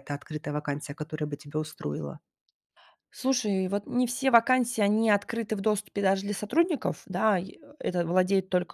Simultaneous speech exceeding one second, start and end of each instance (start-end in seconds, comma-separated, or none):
none